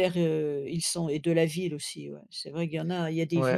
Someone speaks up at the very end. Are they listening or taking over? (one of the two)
taking over